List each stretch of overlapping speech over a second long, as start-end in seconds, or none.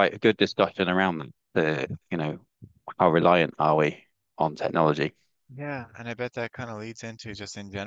none